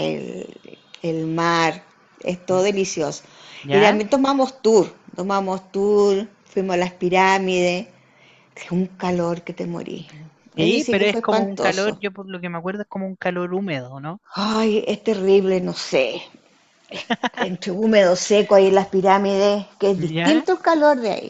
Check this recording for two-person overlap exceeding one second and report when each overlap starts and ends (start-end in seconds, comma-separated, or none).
10.6-12.0